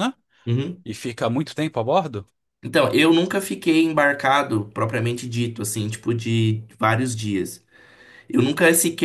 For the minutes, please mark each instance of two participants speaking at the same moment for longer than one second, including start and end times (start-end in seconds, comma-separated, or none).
none